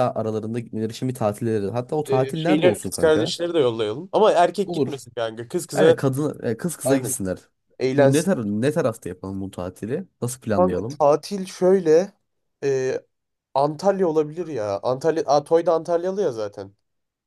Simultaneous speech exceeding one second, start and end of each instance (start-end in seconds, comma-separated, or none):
2.1-3.4